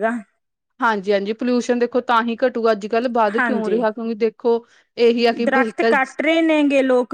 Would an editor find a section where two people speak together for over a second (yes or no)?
no